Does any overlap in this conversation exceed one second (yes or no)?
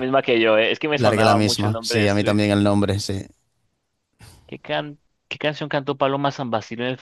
yes